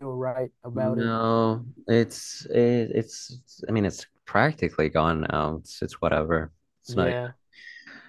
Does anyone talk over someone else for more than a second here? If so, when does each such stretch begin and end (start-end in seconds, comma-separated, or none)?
none